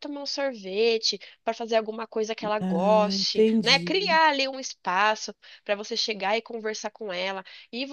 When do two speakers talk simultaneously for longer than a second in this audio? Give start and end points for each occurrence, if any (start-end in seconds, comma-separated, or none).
2.6-4.2